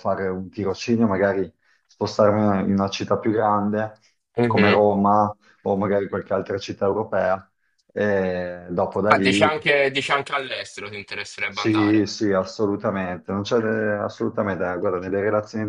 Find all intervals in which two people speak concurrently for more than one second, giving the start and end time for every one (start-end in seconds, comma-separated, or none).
none